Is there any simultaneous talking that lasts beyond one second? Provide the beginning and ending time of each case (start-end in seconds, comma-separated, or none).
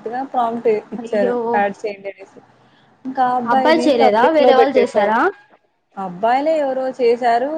3.5-5.1